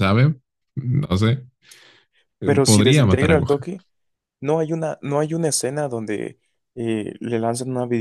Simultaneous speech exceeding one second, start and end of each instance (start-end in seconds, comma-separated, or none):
2.4-3.7